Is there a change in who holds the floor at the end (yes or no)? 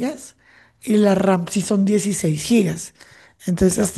no